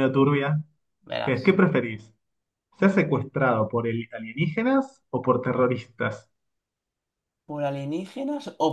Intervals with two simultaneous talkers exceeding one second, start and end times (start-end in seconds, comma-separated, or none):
none